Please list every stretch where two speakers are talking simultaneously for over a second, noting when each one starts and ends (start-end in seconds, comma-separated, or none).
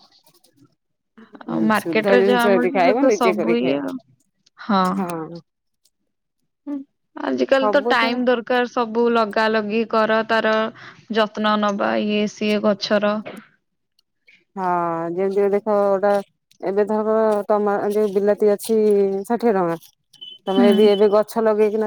1.8-3.8